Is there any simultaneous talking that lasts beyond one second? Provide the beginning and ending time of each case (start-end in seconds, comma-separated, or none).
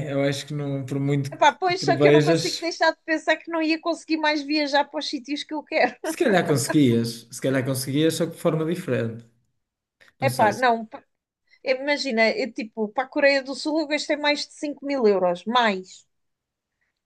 1.3-2.7